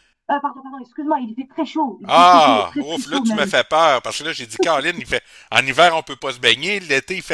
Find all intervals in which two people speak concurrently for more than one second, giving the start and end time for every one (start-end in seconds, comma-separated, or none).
2.1-3.5